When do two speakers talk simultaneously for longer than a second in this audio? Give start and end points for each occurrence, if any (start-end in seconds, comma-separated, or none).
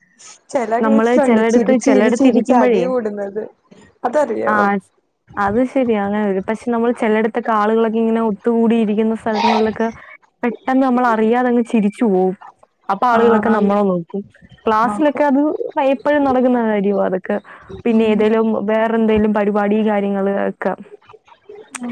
0.8-2.8